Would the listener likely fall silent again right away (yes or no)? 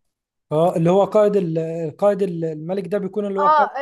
no